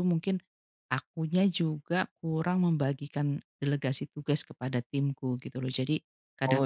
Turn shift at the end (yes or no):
no